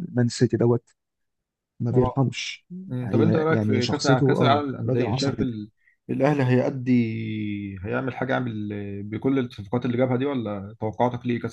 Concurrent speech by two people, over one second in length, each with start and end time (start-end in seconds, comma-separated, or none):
3.0-5.5